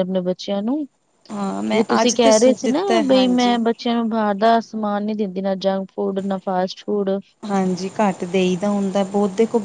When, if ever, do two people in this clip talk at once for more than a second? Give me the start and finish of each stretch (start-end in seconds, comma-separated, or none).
1.3-3.6